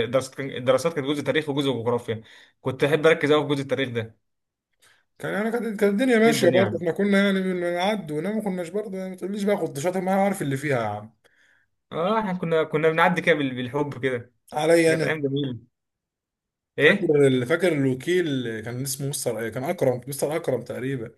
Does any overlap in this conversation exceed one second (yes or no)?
no